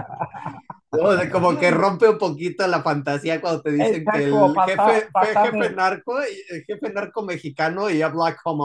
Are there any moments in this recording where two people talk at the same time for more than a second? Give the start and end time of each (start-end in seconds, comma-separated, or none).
3.8-5.7